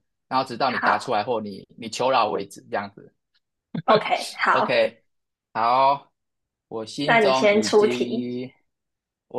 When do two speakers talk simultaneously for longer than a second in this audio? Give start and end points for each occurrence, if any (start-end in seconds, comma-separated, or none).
7.0-8.3